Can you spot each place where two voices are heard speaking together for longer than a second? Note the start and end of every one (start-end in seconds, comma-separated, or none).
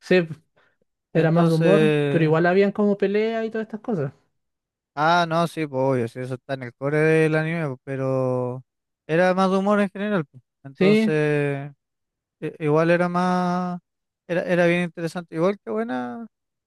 1.1-2.3